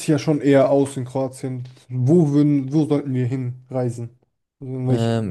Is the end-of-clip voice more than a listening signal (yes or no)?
yes